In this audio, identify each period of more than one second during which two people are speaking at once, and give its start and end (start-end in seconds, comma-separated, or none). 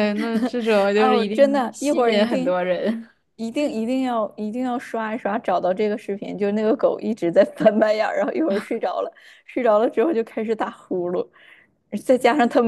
0.9-2.5